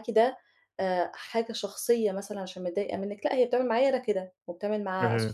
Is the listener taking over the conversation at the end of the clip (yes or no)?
no